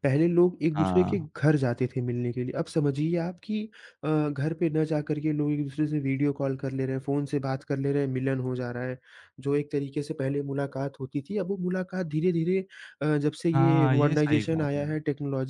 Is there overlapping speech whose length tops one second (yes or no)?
yes